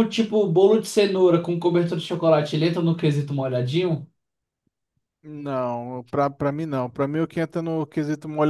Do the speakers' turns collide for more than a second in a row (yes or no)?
no